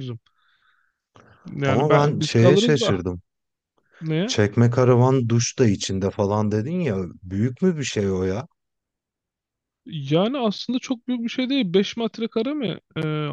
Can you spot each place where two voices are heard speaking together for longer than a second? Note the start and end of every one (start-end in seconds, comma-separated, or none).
1.7-2.9